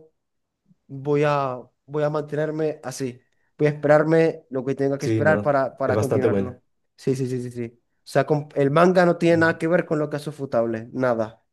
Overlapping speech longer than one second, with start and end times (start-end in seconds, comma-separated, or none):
5.0-6.6